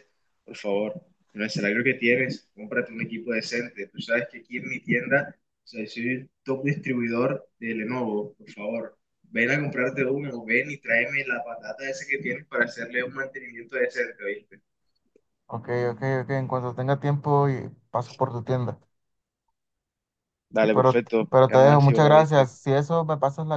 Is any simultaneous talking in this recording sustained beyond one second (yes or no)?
yes